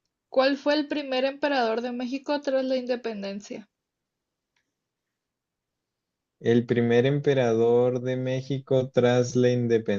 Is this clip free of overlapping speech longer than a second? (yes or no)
yes